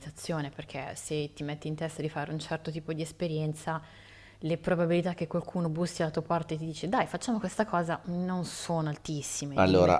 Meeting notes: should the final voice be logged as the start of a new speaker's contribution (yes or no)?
yes